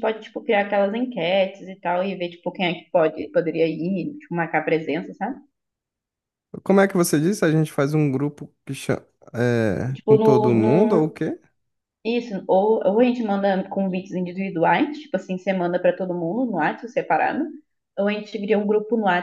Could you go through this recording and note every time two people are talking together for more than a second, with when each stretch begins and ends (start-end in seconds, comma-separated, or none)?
9.9-11.2